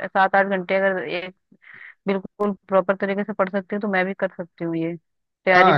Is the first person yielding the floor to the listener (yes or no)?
yes